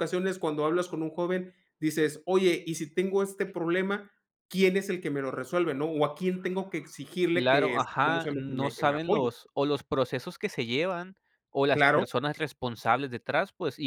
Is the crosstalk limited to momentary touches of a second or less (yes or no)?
no